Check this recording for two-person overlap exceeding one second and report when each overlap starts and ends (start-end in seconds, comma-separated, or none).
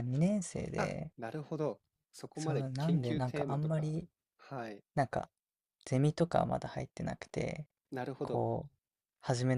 2.3-3.9